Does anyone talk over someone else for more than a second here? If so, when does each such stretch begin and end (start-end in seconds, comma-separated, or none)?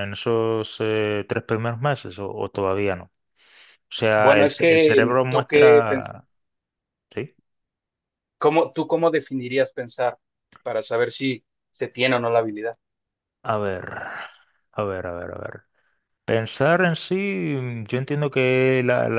4.2-6.1